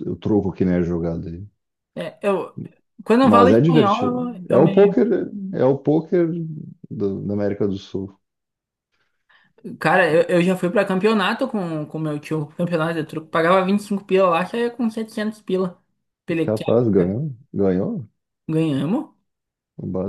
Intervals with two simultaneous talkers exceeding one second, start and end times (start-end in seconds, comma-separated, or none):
3.2-5.0